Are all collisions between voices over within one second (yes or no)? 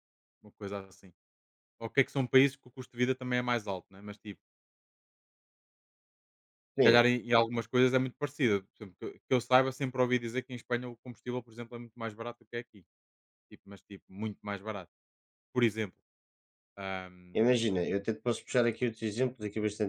yes